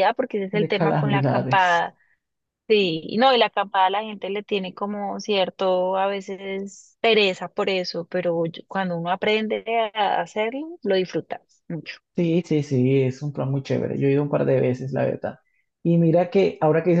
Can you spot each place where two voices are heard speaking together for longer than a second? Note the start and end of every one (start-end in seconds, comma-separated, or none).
0.5-1.9